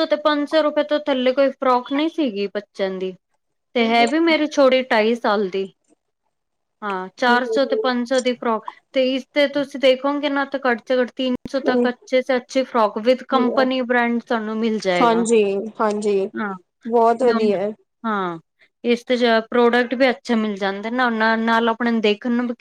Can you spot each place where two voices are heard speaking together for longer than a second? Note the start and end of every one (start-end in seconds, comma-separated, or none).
none